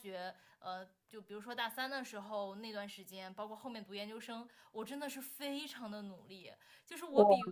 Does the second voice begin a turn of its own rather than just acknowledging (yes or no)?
no